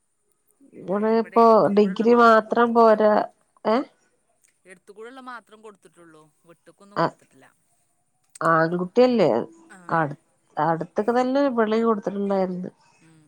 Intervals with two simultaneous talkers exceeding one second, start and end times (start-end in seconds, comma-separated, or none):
0.9-3.0